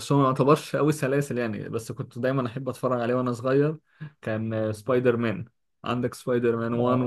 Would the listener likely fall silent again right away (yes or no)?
yes